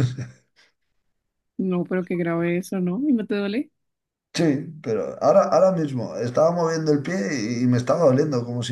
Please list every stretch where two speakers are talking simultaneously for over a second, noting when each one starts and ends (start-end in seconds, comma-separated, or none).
none